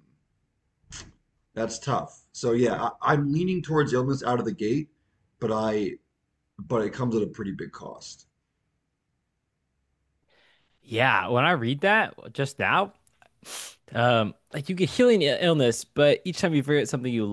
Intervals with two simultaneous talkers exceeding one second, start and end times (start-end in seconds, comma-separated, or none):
none